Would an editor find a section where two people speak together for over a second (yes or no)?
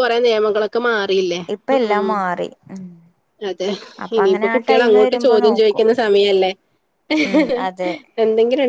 yes